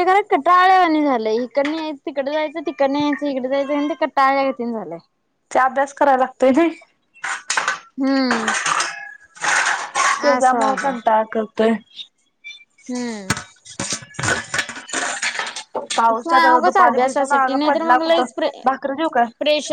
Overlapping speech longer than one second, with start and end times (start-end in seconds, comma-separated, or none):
16.6-18.2